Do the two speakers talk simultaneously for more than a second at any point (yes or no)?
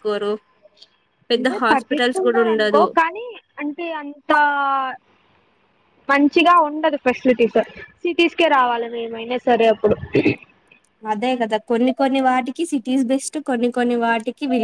yes